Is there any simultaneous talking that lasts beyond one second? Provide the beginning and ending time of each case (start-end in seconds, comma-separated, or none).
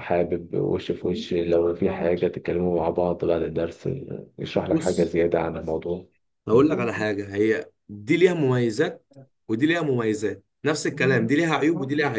none